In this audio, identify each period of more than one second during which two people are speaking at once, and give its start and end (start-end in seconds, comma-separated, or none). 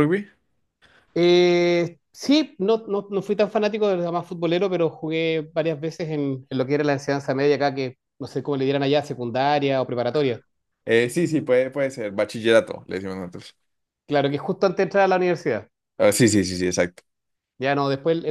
none